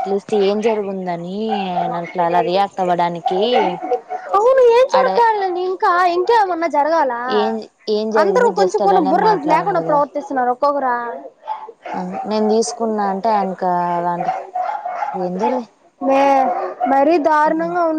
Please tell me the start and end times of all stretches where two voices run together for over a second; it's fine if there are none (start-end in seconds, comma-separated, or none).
8.2-10.0